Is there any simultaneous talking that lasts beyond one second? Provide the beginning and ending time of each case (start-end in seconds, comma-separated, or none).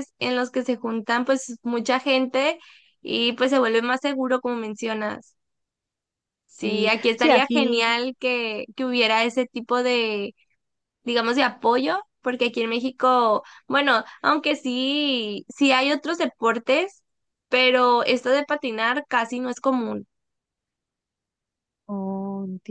6.6-8.0